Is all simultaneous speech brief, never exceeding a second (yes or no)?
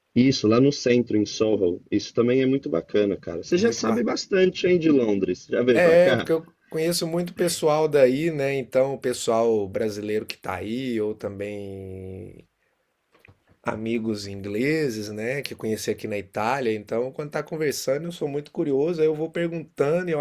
yes